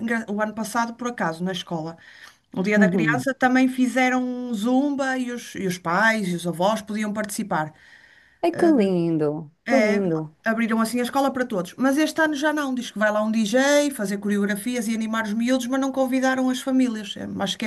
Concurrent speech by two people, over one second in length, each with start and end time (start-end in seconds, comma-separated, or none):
none